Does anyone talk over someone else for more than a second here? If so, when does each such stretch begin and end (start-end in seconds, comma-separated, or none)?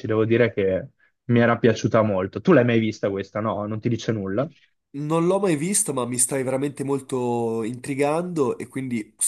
none